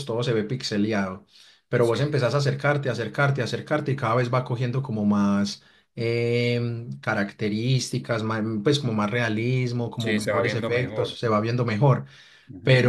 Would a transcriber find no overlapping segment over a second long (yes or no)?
no